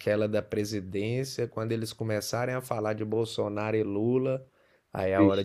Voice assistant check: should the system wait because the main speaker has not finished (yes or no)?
yes